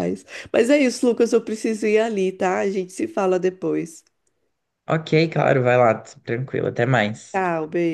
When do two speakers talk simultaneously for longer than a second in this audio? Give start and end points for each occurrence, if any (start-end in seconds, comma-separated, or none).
none